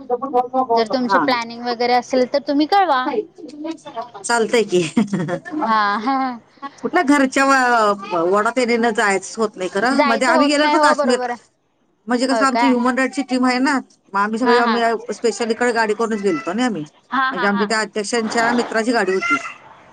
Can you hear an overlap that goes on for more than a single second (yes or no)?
yes